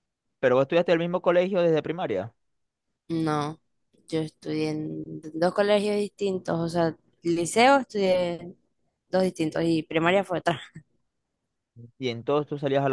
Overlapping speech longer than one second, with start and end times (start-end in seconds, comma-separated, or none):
none